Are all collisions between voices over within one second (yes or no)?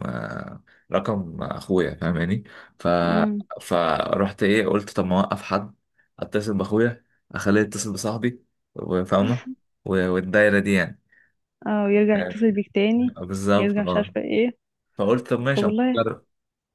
yes